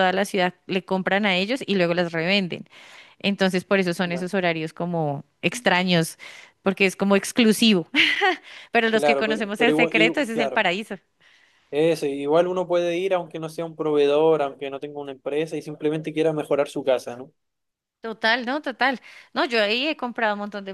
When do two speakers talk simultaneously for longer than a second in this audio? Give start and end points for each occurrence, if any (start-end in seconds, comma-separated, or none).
8.9-10.6